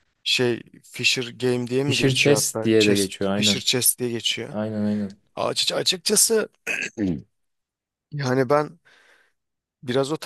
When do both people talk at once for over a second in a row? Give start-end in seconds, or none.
1.8-3.6